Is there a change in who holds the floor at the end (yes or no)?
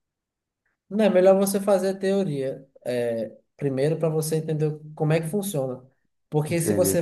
no